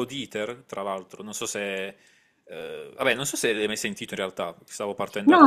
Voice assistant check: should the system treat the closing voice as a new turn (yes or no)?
yes